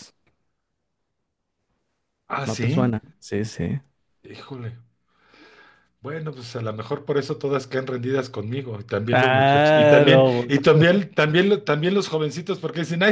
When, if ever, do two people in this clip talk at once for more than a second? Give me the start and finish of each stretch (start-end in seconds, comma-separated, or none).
9.1-10.5